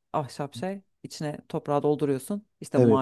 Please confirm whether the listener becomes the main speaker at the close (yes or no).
no